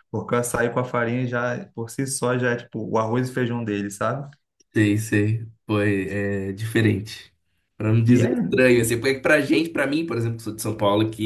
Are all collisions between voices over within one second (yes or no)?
yes